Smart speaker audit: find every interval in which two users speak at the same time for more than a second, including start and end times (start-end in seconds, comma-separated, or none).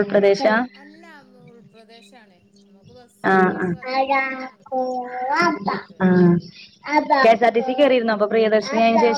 none